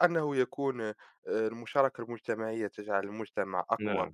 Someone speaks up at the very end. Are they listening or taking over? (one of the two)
listening